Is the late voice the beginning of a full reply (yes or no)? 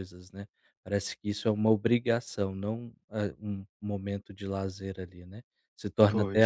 no